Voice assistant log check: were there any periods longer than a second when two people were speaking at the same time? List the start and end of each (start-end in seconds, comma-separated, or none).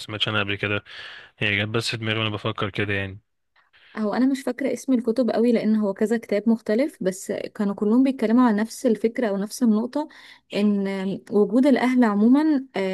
none